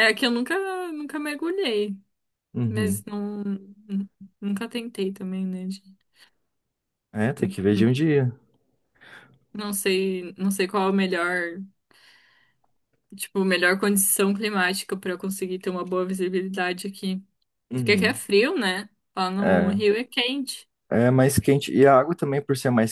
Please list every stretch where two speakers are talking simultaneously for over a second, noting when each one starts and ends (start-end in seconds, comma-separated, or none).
none